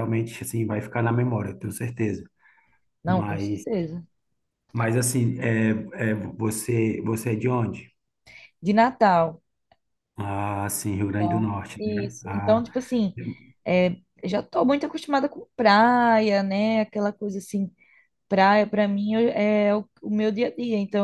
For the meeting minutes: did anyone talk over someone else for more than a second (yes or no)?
yes